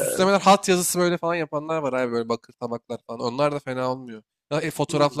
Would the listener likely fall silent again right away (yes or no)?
no